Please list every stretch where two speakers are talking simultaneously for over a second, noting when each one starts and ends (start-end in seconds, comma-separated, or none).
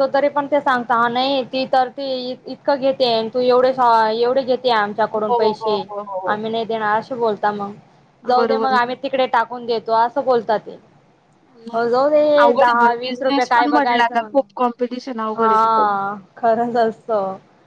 12.6-14.3